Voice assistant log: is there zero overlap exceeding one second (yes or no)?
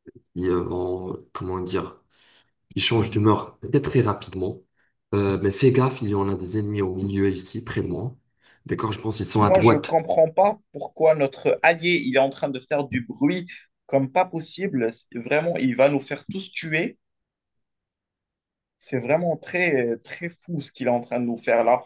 yes